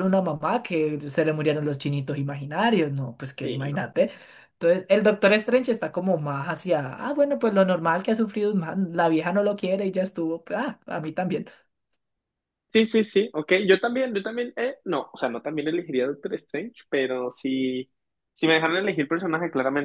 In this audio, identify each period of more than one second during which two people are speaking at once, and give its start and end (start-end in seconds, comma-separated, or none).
none